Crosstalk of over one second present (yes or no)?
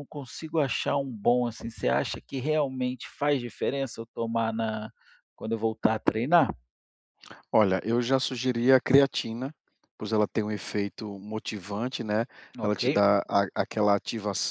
no